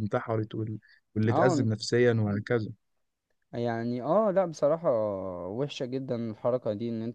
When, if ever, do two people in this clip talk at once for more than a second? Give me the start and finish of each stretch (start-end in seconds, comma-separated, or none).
none